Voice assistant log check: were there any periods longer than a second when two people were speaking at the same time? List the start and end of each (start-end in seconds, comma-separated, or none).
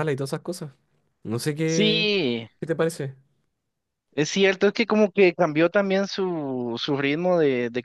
none